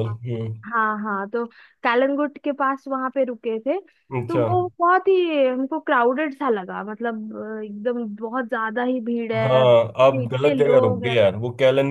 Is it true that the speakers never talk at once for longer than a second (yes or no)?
no